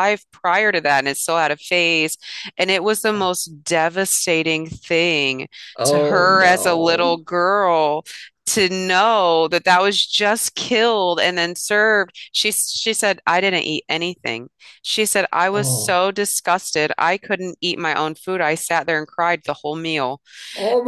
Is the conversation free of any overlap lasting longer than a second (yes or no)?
no